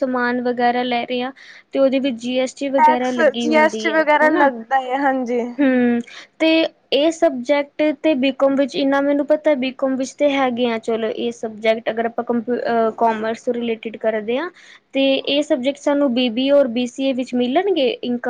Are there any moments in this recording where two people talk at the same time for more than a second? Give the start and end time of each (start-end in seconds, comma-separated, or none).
2.8-4.5